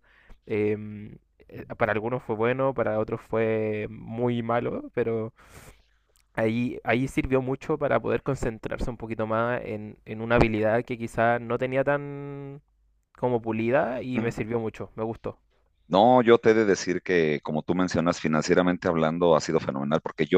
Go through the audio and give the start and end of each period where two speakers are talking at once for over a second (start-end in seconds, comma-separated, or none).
none